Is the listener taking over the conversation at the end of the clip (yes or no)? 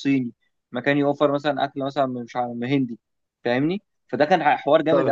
yes